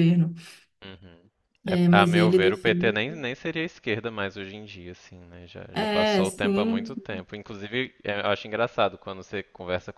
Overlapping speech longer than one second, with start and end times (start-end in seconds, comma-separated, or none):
1.7-3.0, 5.8-7.0